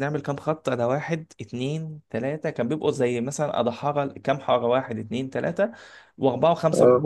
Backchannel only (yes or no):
yes